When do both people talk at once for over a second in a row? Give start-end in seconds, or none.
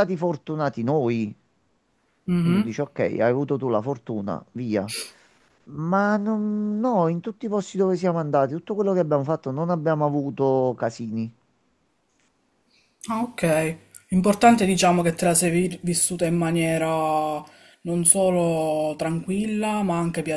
none